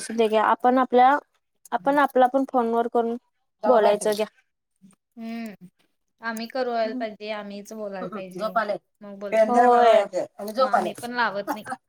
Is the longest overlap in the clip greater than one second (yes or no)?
no